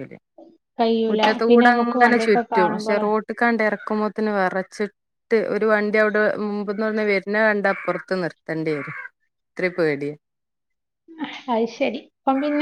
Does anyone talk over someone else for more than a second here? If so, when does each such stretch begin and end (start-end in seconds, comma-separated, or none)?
1.5-3.0